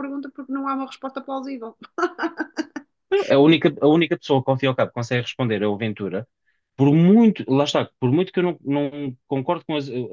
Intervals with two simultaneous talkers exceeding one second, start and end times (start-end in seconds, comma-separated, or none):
none